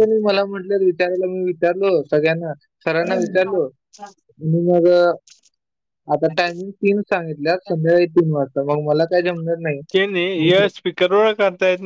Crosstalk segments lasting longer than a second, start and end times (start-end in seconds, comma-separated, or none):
none